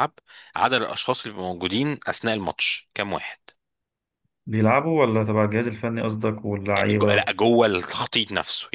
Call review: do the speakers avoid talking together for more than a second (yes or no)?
yes